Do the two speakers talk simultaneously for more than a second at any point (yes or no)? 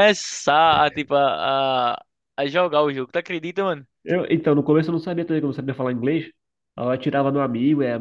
no